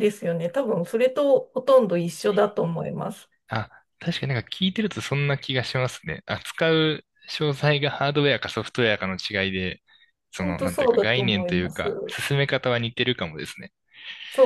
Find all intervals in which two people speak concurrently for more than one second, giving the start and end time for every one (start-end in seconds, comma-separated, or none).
10.4-12.2